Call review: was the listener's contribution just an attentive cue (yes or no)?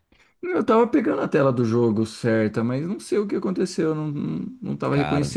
yes